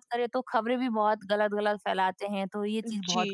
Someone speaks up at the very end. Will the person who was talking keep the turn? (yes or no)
no